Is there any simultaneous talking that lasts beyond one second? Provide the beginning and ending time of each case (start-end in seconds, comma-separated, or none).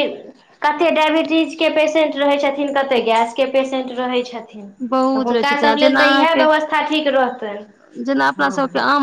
4.9-6.5